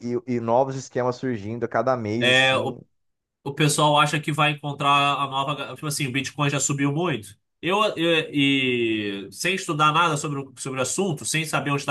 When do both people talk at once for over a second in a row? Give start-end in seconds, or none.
none